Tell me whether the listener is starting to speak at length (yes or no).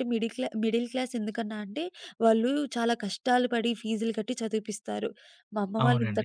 yes